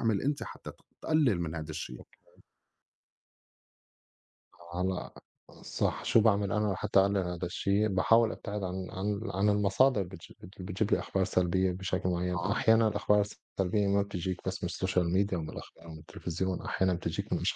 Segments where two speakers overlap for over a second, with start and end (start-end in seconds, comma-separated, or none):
none